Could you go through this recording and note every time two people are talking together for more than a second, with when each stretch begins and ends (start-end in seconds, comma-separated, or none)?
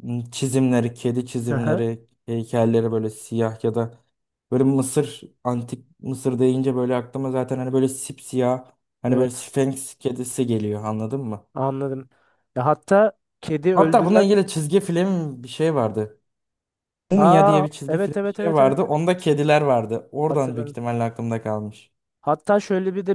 17.2-18.9